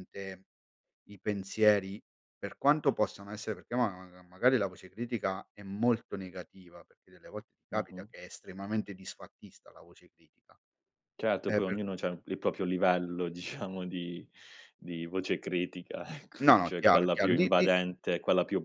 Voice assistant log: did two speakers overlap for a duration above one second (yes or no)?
yes